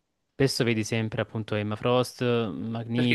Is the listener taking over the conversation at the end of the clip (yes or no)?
yes